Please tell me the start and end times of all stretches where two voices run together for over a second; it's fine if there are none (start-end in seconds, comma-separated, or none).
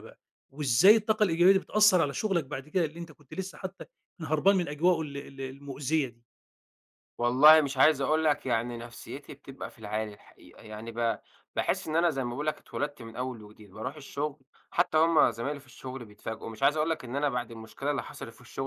none